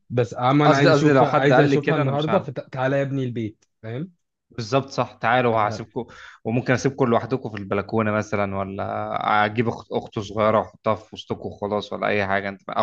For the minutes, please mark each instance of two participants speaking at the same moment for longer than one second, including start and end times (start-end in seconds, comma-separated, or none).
0.7-2.5